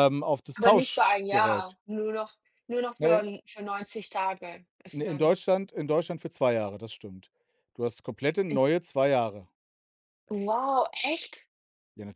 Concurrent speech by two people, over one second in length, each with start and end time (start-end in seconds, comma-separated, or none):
0.5-1.8